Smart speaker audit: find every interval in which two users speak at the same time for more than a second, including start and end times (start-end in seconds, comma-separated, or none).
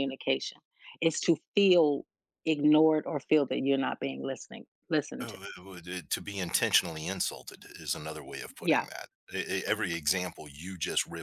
none